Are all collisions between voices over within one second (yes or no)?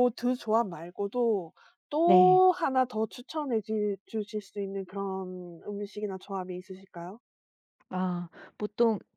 yes